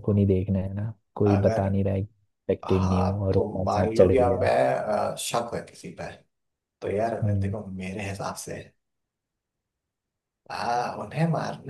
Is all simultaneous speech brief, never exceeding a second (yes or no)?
no